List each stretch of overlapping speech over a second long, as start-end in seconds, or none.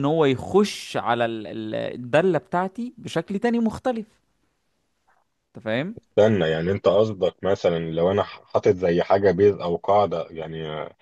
none